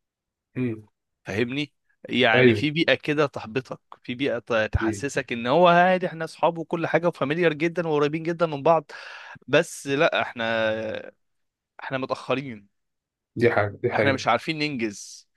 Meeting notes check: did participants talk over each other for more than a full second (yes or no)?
no